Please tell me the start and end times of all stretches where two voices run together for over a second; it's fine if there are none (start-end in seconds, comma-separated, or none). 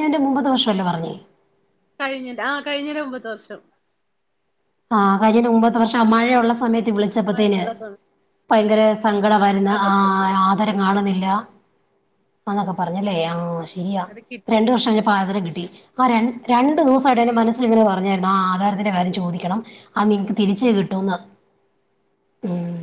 none